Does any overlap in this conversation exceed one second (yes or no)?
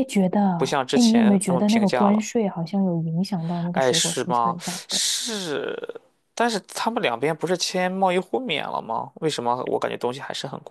yes